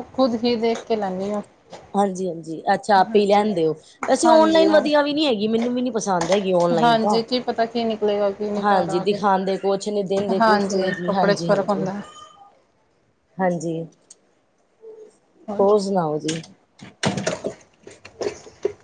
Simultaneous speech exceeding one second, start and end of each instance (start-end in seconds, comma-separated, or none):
10.4-11.9